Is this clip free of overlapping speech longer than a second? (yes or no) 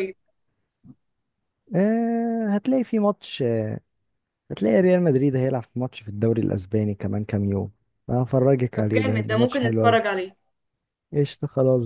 no